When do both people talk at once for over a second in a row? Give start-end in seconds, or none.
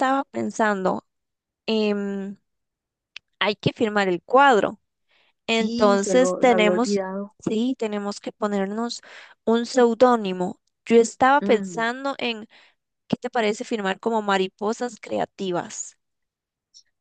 5.5-7.0